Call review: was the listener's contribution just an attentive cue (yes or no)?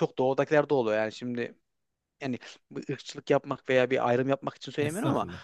yes